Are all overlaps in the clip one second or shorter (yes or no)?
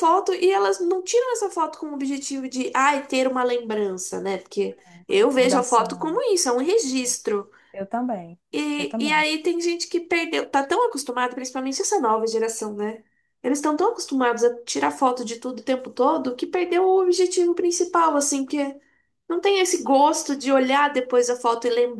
no